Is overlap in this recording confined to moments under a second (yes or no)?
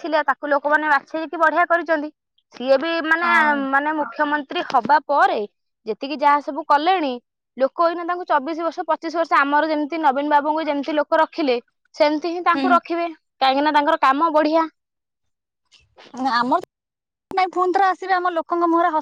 yes